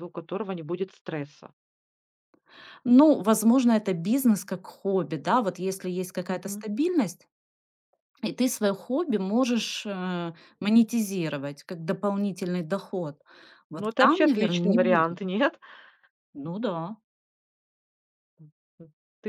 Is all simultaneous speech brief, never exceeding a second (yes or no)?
no